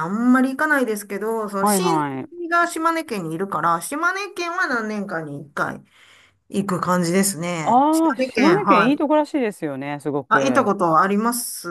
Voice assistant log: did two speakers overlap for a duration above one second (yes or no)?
yes